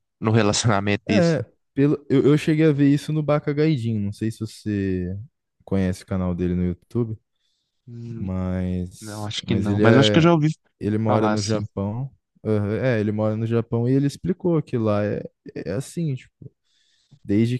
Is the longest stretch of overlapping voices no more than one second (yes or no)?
no